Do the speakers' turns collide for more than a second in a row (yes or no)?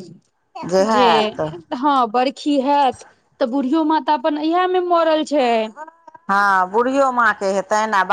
no